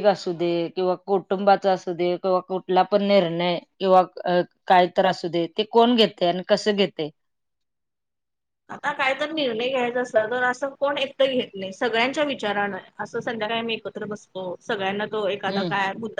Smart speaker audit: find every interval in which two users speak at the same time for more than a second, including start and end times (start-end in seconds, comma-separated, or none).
none